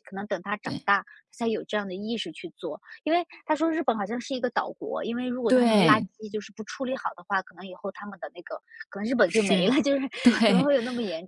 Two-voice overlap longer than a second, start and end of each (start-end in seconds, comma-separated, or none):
none